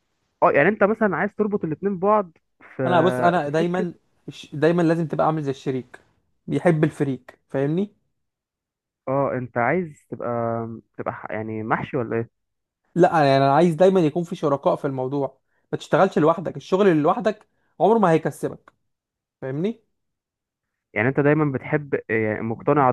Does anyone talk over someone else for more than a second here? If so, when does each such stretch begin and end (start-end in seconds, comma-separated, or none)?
none